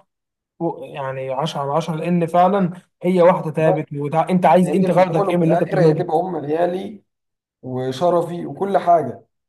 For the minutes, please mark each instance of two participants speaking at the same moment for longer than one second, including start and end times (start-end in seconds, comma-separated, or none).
4.6-6.1